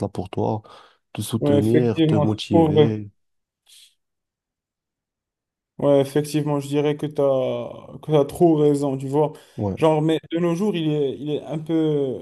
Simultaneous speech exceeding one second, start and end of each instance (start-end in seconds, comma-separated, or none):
1.4-2.9